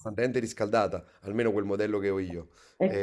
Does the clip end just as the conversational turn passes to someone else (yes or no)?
no